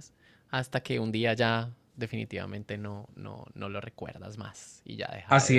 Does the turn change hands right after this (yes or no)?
yes